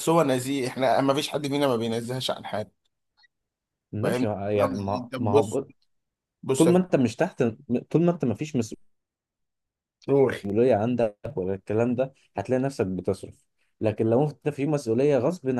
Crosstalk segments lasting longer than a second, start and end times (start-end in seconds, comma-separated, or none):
4.0-5.6